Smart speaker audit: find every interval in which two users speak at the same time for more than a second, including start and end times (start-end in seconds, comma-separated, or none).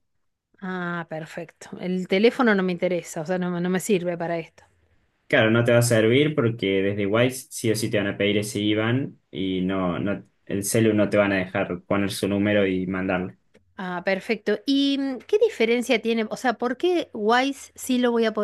none